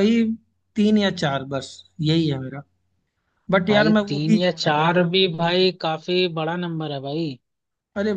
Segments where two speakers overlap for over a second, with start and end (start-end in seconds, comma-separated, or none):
3.7-5.2